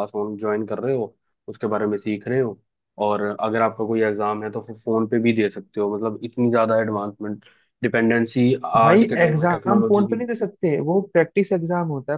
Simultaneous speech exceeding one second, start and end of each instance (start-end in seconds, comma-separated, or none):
8.8-10.2